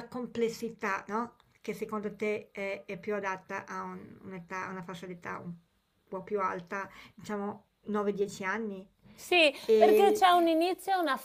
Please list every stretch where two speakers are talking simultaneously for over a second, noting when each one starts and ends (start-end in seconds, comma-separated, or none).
none